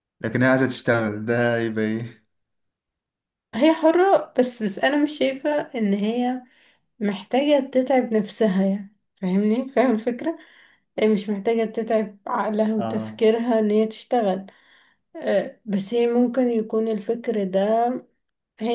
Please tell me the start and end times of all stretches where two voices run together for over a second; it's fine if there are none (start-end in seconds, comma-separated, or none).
none